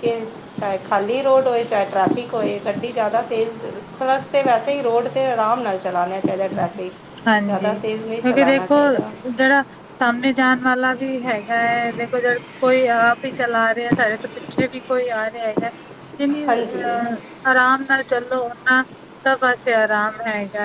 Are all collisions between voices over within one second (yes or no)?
no